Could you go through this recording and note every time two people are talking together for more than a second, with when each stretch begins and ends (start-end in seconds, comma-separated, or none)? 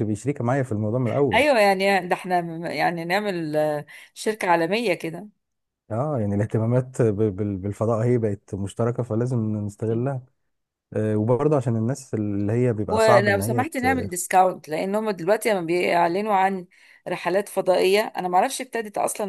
12.9-14.1